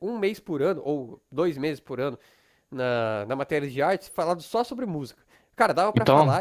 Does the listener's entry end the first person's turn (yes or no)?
no